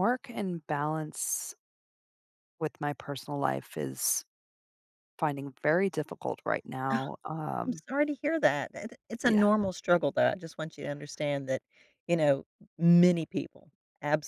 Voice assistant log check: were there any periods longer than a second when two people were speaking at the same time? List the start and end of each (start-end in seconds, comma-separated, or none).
none